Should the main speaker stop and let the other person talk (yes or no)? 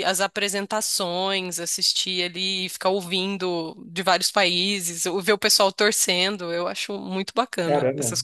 yes